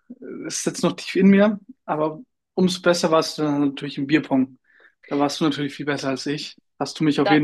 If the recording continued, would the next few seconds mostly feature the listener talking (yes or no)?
no